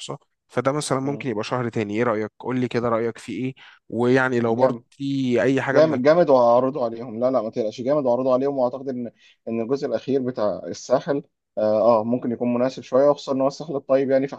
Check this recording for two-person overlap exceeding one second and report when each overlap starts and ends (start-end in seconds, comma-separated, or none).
none